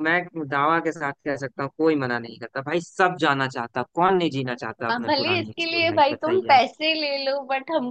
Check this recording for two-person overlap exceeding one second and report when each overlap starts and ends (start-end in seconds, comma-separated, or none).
4.9-6.6